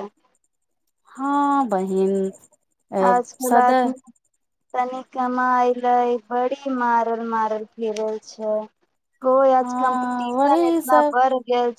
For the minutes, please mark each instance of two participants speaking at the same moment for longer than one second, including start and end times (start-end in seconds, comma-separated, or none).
9.6-11.1